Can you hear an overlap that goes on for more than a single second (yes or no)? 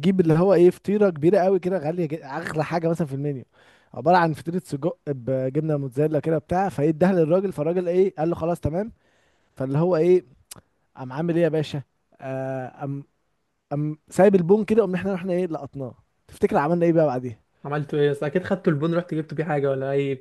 no